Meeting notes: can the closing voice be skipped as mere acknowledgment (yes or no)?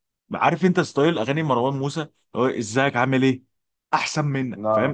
yes